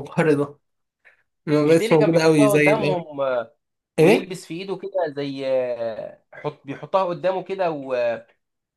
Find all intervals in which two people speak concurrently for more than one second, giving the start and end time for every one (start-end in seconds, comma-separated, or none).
1.6-3.0